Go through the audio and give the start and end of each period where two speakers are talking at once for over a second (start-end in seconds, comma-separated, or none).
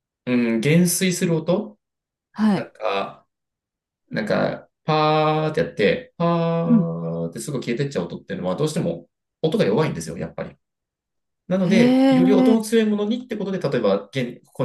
11.6-12.8